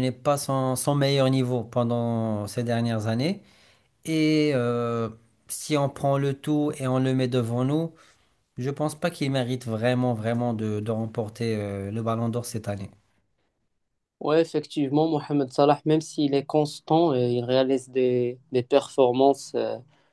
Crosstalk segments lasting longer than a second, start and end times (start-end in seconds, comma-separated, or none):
none